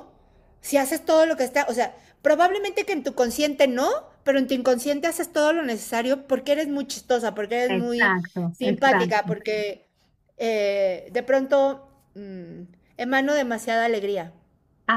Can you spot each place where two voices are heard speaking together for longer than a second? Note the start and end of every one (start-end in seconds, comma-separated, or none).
7.7-9.3